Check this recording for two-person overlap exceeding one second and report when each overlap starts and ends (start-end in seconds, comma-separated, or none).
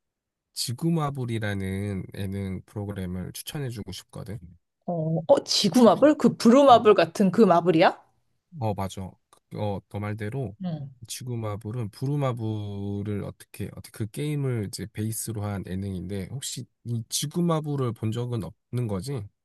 none